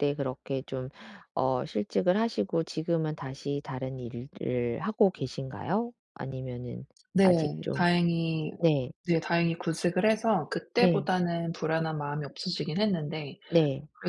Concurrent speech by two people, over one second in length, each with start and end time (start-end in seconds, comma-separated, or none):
none